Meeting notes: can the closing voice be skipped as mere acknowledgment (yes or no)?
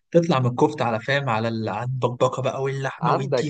no